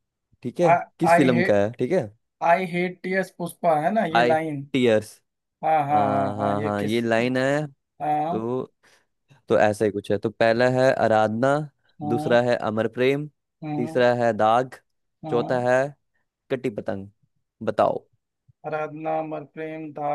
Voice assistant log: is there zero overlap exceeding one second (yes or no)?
no